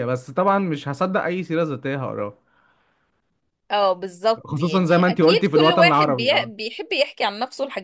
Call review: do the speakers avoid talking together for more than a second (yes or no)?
no